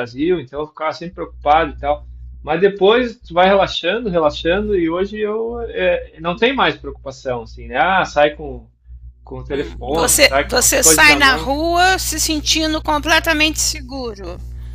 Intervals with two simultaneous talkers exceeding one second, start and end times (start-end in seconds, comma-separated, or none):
9.5-11.5